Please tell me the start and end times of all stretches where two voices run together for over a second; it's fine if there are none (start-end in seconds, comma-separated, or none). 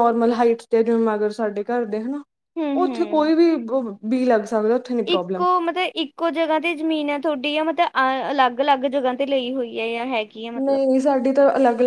none